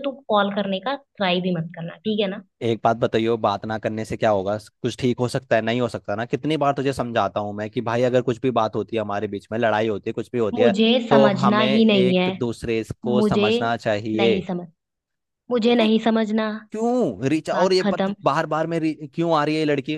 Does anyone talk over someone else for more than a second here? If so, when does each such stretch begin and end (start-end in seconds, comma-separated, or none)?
10.5-12.2